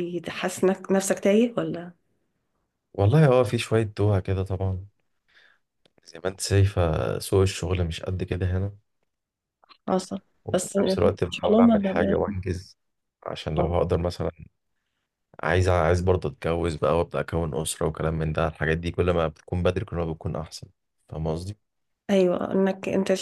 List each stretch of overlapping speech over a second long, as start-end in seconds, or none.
10.4-12.3